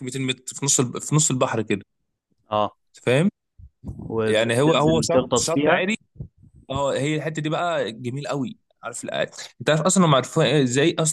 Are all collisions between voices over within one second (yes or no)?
no